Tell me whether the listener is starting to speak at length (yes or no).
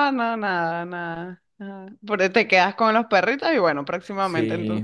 yes